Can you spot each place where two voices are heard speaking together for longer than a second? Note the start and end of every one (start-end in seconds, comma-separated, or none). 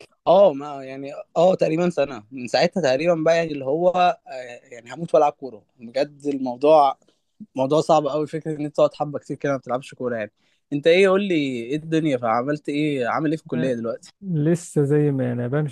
none